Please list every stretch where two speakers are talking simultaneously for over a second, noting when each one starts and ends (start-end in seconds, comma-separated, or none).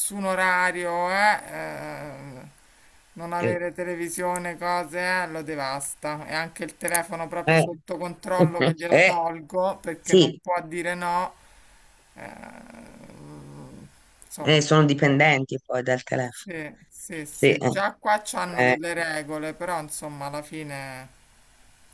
none